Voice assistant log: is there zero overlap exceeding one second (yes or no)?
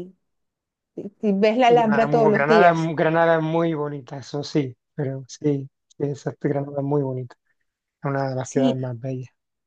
no